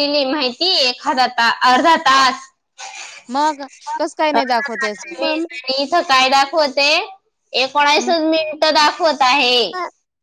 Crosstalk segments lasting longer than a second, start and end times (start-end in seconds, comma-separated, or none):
4.3-5.6